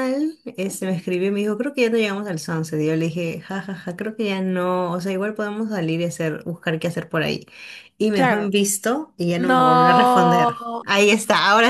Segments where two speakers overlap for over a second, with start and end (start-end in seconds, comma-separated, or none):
9.4-10.8